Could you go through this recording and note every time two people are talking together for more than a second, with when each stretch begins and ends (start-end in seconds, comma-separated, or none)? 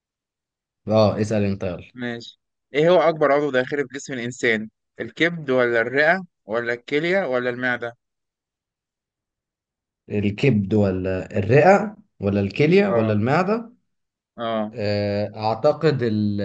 none